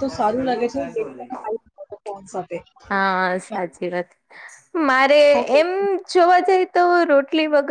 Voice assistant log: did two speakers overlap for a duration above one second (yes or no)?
no